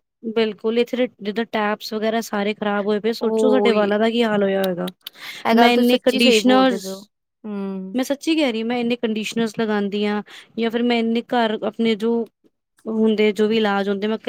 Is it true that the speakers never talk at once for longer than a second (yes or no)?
no